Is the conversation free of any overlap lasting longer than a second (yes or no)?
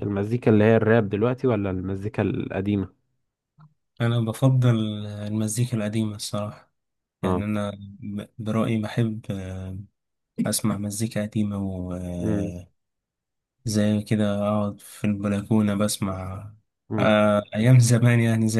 yes